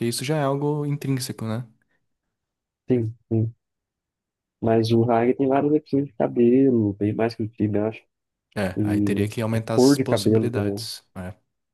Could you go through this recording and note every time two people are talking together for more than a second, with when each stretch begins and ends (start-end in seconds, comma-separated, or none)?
9.5-10.9